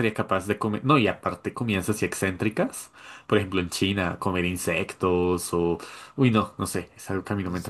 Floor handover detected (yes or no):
yes